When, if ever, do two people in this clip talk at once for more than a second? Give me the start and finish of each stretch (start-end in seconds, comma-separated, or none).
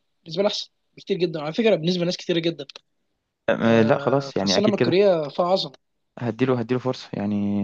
3.6-5.0